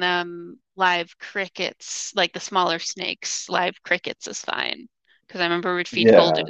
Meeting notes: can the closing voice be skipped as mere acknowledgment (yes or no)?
yes